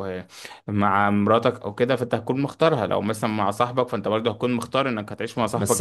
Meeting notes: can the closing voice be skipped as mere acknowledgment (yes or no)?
no